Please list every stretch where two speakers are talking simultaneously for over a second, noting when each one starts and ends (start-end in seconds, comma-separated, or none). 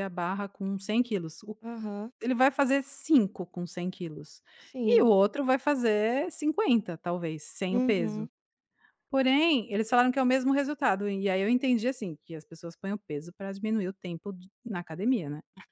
none